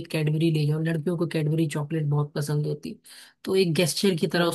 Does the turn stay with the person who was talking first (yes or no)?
yes